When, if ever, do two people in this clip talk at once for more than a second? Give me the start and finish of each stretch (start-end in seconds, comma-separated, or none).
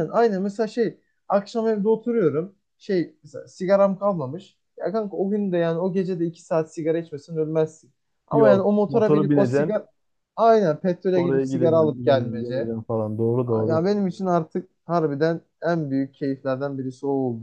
8.4-9.8, 11.1-12.7